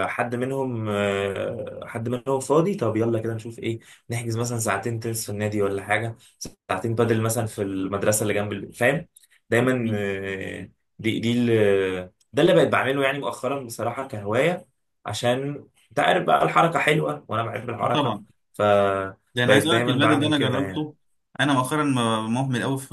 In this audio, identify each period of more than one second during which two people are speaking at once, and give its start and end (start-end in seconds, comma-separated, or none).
19.4-20.9